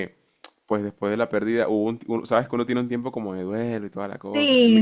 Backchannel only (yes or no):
no